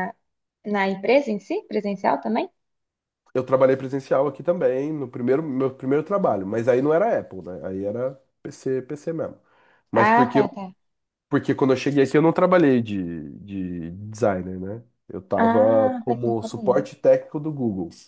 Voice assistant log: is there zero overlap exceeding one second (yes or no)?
no